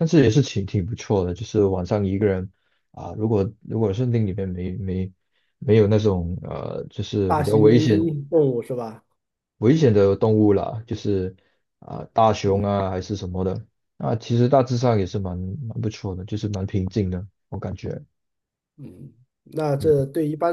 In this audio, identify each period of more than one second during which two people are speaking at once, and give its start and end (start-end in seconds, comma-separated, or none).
none